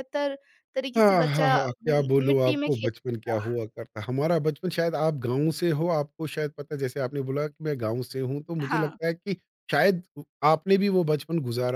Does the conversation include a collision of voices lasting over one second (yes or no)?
yes